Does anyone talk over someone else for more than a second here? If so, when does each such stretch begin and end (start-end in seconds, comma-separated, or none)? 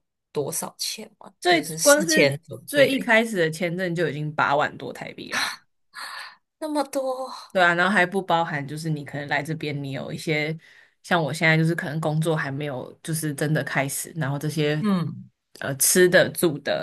1.4-3.1